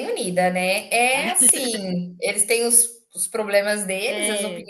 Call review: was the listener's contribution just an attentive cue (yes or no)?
yes